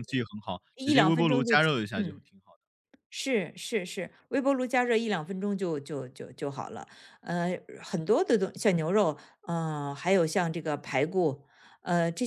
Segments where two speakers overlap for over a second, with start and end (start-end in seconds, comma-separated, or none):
0.8-2.2